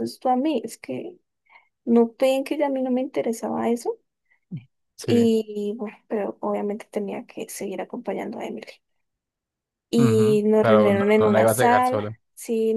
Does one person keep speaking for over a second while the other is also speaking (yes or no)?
yes